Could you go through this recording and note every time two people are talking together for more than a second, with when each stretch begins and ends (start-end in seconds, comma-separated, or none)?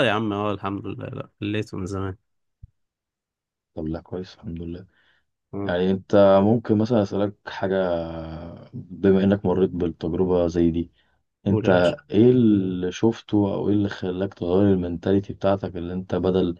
none